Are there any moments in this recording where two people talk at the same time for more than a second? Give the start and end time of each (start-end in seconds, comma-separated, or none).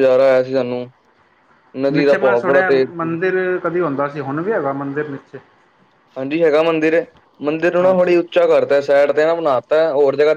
1.9-3.1